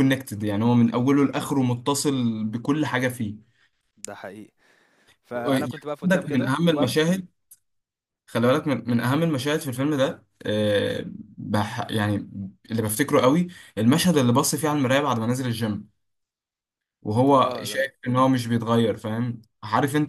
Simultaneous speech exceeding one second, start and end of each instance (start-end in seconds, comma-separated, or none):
5.5-7.0